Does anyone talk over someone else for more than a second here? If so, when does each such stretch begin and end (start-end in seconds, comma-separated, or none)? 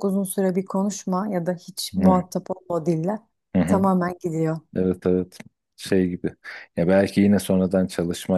none